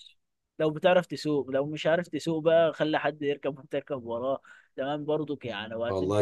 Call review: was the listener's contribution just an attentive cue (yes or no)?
yes